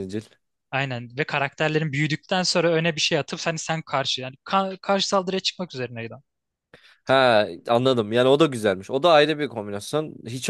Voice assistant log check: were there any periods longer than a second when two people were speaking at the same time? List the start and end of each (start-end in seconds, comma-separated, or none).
none